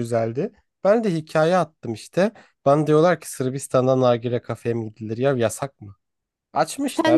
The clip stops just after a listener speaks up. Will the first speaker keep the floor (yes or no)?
no